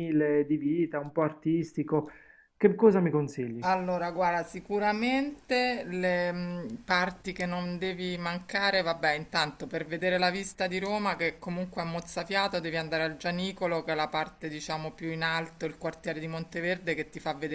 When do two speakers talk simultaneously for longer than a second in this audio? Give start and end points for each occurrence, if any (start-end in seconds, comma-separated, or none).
none